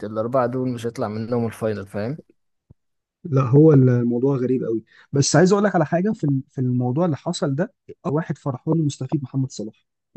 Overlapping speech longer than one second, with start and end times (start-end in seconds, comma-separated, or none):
none